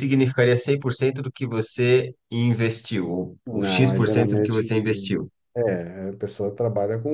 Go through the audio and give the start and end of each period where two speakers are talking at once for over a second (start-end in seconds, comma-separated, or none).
3.5-4.7